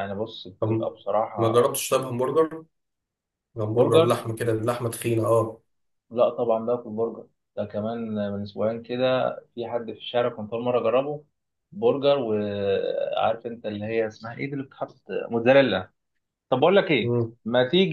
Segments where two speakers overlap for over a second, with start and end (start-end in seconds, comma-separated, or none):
none